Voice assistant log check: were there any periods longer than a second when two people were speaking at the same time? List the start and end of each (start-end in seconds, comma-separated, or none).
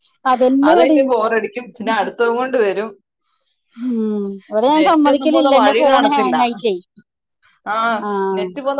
4.8-6.3